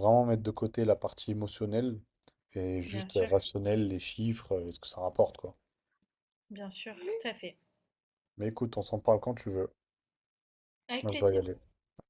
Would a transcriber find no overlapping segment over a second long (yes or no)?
yes